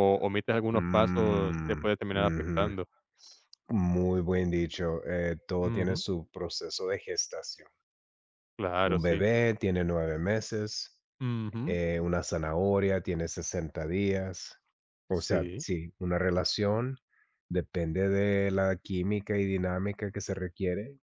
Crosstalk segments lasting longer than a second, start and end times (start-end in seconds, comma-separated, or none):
0.7-2.7